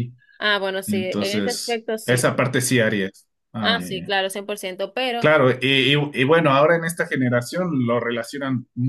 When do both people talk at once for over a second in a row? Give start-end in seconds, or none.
0.8-2.3